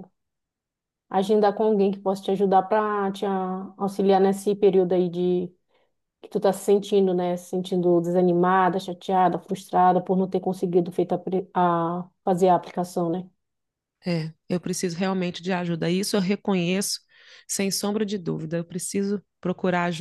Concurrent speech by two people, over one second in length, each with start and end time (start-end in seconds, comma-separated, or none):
none